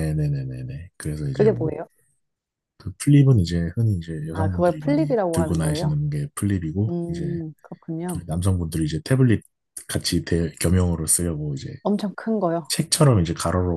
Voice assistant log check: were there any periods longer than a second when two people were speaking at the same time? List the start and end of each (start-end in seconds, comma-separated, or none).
4.3-6.0